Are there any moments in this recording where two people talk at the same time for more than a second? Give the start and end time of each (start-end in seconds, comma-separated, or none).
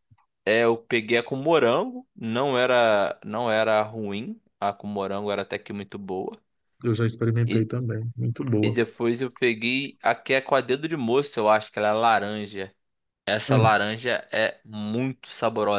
none